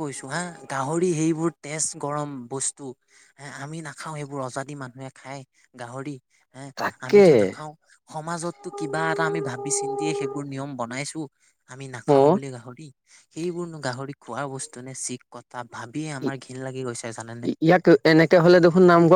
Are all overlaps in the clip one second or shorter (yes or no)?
yes